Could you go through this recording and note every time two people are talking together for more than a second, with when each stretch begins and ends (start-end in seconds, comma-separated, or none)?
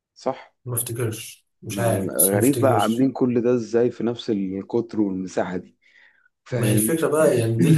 1.7-3.1